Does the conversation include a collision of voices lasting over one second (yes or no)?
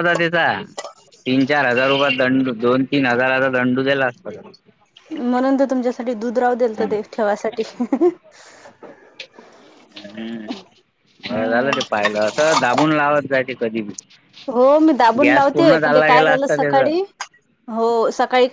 yes